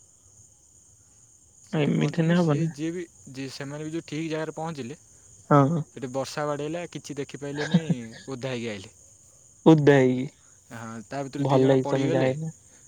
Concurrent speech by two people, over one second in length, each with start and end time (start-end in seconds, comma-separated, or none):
10.7-12.3